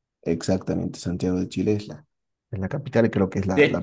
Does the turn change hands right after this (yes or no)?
no